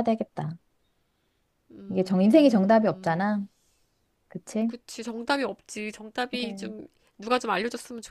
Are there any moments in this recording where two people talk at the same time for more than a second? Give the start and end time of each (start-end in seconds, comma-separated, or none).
1.9-3.3